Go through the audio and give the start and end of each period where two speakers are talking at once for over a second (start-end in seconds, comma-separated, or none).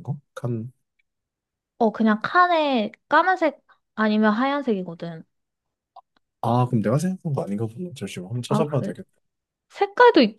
none